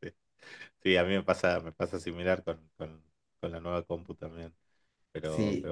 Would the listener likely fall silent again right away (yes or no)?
yes